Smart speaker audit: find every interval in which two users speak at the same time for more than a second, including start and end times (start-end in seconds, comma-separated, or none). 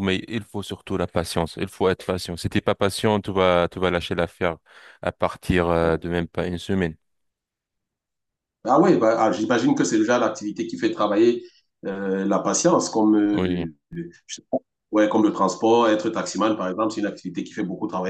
none